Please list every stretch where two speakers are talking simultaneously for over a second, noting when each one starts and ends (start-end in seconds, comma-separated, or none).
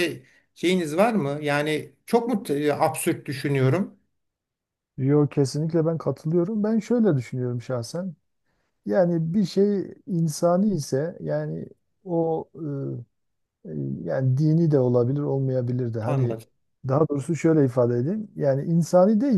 none